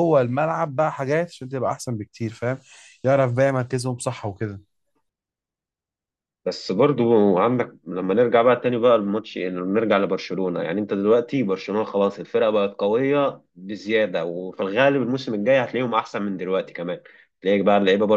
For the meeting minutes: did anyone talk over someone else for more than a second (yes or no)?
no